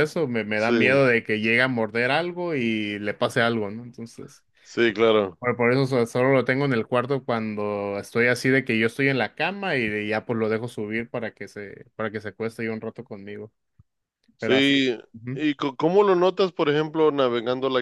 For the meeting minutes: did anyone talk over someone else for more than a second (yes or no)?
no